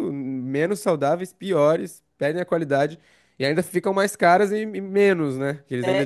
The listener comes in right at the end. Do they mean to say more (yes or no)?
yes